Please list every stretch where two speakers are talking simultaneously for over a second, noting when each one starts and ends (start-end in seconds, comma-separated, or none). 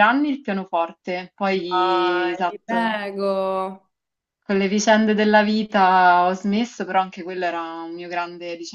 1.7-3.0